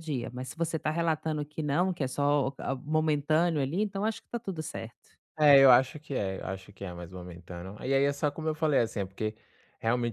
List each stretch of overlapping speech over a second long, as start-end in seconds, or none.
none